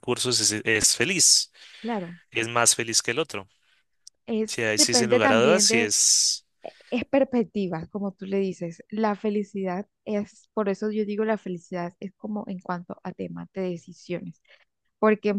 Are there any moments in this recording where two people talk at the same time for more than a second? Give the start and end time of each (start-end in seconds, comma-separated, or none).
4.5-5.9